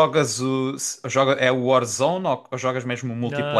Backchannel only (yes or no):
no